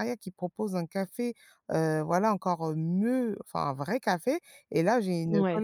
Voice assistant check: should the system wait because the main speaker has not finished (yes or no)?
yes